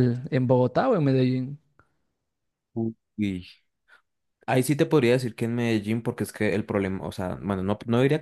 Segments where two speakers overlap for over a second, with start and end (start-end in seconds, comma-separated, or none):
none